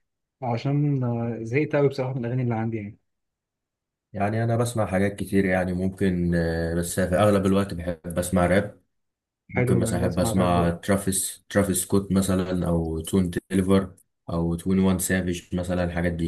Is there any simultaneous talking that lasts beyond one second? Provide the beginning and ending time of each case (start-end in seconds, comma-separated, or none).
9.5-10.7